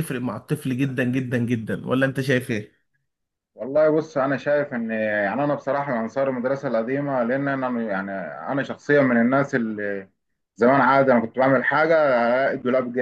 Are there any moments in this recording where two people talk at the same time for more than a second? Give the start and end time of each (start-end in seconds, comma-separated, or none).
none